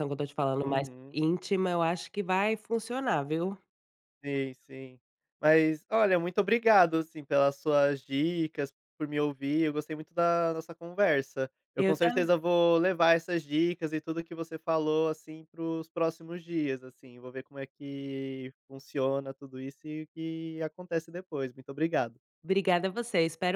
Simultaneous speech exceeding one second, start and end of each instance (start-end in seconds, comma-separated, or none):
none